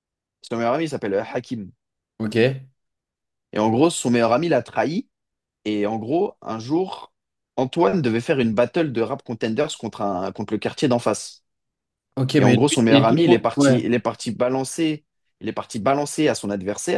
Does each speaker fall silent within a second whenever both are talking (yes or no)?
no